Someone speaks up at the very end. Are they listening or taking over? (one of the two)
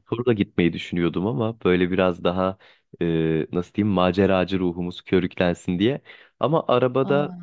listening